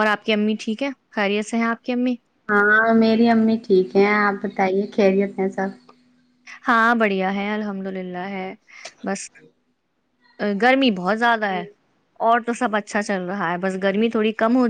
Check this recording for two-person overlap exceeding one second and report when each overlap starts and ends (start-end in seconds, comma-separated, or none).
none